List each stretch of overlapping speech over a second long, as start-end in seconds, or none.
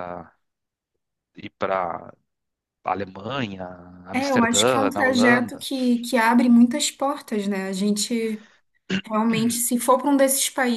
4.1-5.7